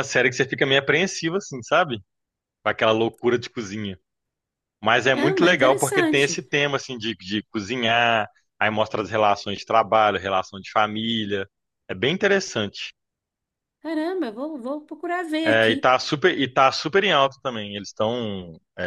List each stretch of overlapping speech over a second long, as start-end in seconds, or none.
5.1-6.4